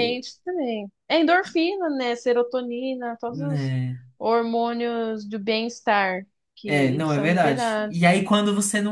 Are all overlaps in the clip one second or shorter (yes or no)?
no